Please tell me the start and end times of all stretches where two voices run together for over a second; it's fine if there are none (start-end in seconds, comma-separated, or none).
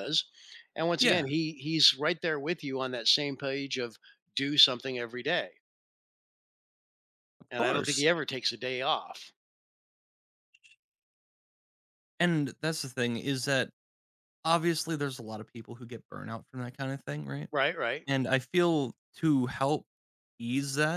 none